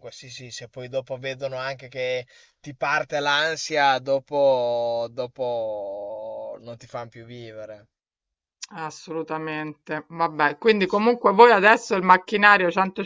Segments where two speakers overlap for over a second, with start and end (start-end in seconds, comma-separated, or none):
none